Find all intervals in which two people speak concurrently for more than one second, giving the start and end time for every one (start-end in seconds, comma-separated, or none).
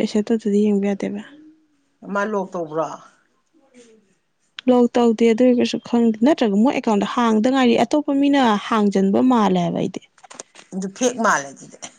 none